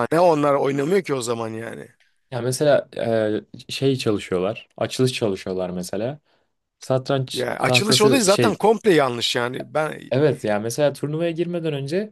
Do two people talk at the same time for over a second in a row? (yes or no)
yes